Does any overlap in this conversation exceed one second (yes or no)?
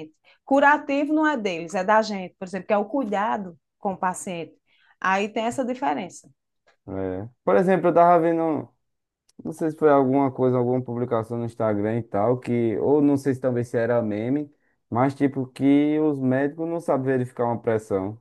no